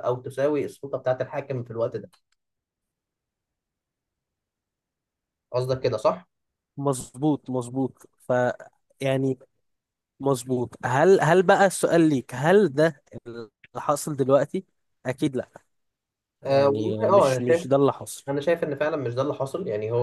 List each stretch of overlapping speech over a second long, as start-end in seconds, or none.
16.5-17.7